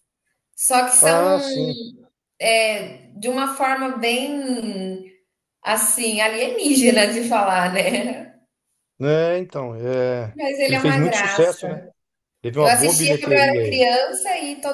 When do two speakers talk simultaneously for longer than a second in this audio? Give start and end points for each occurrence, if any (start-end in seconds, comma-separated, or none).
10.3-11.7, 12.6-13.9